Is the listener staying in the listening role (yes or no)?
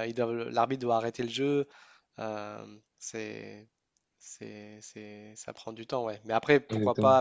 yes